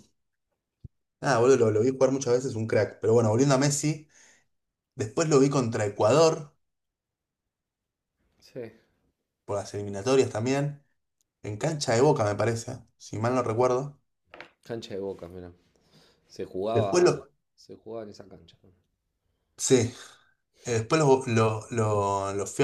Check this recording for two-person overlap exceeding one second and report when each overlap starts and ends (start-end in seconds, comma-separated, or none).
none